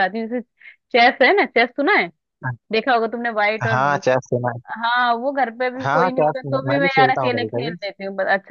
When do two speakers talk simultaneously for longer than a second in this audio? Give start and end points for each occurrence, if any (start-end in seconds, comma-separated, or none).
5.8-7.7